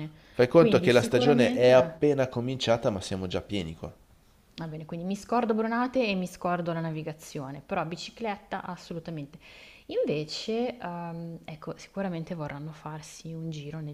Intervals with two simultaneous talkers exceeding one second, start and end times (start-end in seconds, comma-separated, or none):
0.5-2.0